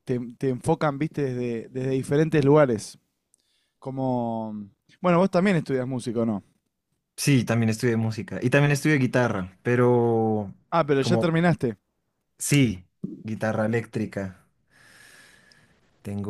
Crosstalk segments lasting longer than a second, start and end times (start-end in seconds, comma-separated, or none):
none